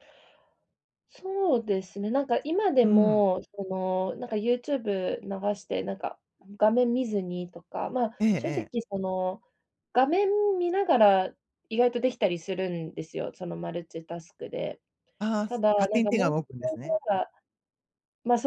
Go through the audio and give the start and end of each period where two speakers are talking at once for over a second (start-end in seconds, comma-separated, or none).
15.5-17.0